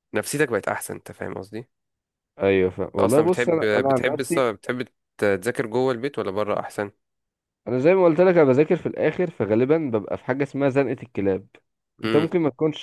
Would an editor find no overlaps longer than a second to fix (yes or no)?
no